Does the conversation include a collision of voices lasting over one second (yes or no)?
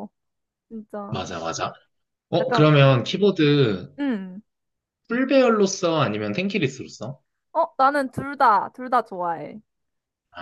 no